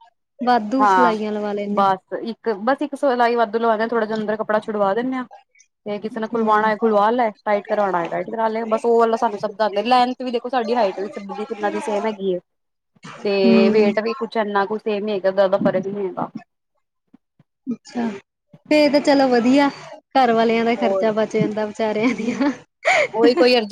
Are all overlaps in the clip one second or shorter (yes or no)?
yes